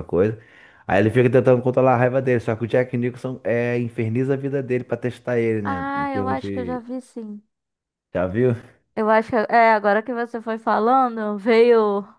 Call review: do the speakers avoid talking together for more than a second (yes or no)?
no